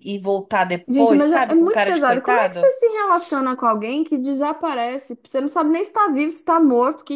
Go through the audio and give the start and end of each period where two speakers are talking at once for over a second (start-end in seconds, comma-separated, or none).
0.9-2.7